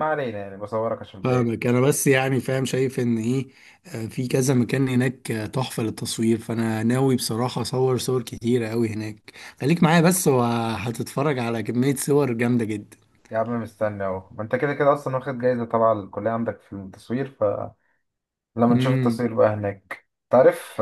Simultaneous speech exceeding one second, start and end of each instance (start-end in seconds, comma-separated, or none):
none